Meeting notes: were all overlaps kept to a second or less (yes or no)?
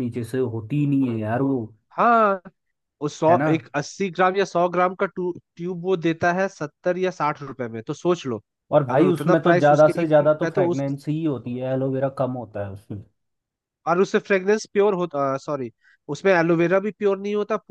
no